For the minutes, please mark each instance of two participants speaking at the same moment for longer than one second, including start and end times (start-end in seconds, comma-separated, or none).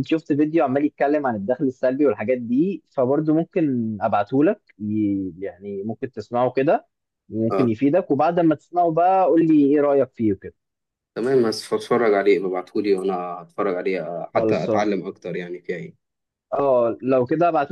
none